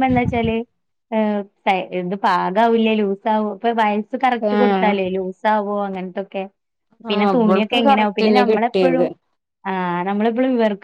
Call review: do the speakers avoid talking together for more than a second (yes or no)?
no